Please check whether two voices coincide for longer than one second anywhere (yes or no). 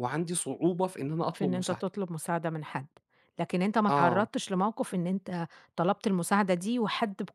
no